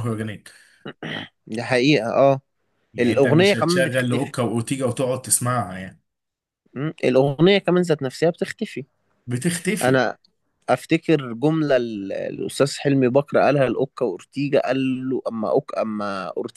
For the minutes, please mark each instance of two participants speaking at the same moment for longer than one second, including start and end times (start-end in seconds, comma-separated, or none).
3.0-4.3